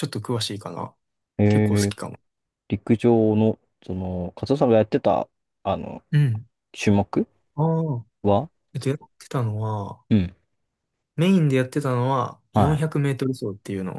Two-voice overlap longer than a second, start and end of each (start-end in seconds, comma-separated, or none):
none